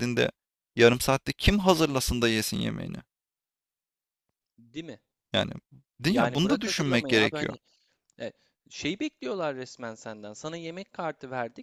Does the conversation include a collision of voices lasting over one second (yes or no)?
yes